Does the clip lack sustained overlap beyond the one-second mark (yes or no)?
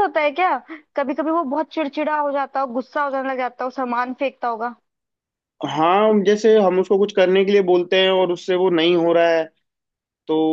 yes